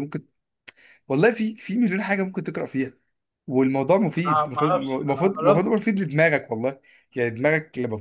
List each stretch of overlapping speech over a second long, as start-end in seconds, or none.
4.2-5.8